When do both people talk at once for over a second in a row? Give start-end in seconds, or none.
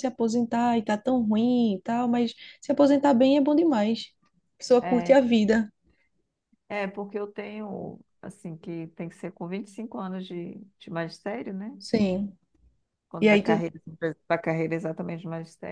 none